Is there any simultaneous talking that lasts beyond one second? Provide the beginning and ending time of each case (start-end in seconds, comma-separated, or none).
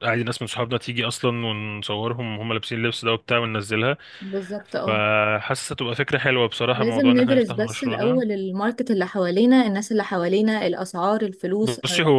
6.7-8.2